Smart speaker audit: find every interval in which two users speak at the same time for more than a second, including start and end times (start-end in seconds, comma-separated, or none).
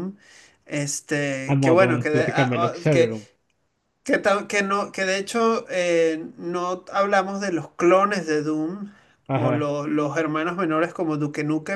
1.5-3.1